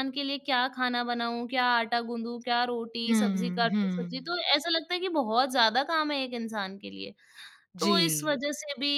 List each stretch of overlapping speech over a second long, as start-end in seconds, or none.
3.1-4.3